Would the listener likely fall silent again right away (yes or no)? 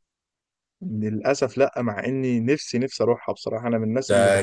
no